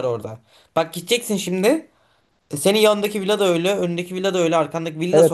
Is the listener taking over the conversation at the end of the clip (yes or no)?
yes